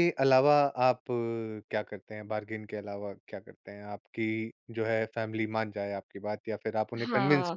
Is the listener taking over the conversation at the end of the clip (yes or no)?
yes